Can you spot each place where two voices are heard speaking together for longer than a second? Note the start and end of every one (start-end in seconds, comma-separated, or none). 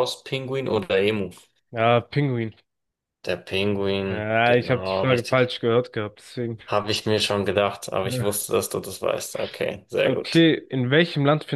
4.1-5.5